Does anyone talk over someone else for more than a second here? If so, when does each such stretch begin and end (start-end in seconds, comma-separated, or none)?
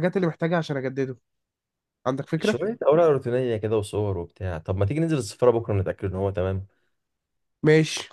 none